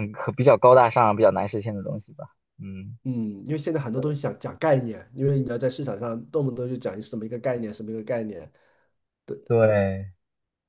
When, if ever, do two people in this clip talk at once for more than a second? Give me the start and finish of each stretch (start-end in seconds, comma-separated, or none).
none